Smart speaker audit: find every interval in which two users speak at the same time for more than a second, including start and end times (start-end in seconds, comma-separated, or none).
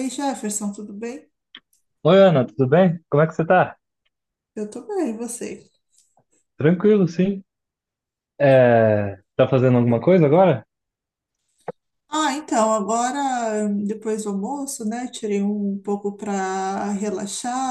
none